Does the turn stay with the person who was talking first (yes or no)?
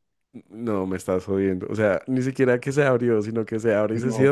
no